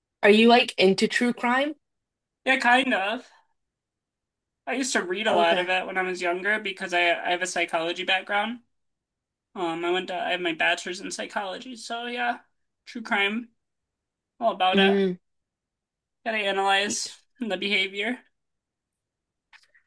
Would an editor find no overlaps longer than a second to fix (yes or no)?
yes